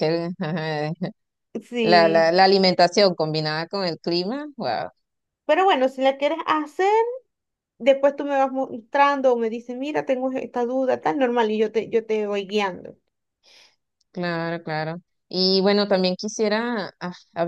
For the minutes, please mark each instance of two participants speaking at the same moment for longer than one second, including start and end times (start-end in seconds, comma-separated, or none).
none